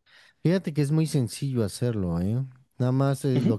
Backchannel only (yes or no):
yes